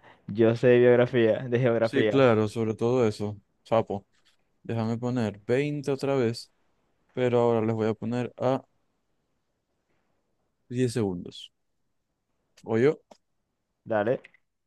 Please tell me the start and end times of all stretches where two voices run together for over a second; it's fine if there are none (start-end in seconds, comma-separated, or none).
none